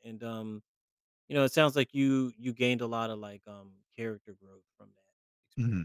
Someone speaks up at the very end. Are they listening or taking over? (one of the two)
taking over